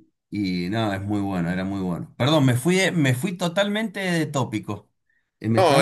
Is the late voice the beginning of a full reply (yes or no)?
yes